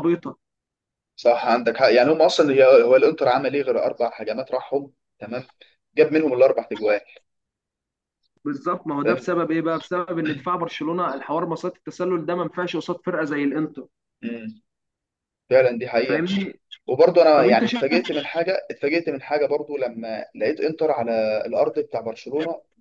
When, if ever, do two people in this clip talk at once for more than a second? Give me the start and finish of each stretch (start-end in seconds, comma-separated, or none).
none